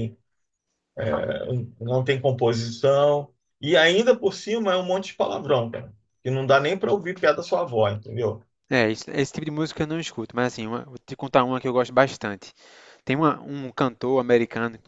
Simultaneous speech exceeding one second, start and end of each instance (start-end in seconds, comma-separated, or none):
none